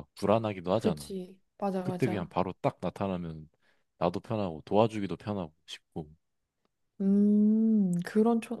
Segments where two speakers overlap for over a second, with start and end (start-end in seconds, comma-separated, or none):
none